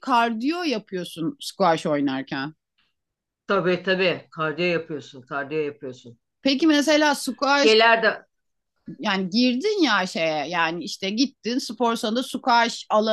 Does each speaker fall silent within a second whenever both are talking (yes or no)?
yes